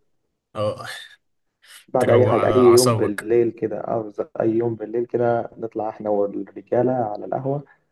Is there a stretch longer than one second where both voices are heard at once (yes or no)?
yes